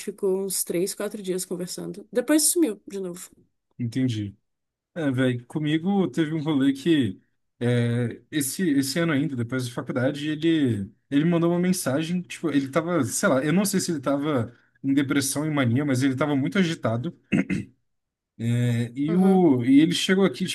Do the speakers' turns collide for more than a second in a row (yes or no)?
no